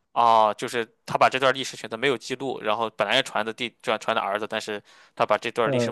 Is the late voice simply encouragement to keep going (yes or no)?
no